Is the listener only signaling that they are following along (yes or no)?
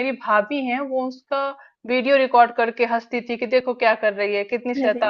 yes